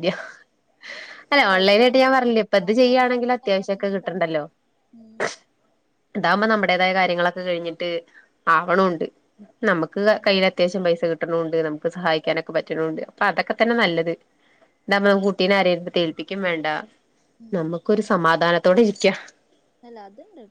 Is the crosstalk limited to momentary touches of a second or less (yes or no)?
no